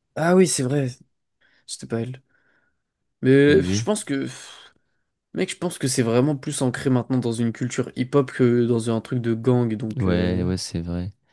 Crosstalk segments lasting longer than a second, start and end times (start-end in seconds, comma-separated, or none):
none